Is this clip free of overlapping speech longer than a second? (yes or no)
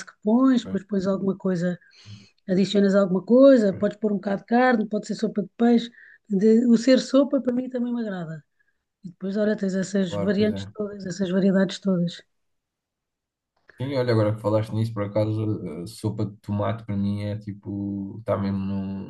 yes